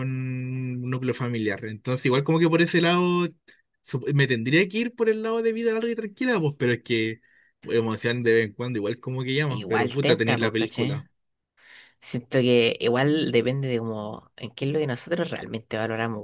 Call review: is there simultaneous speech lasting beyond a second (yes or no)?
yes